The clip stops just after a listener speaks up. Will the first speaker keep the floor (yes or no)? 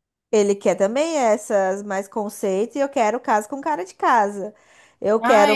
no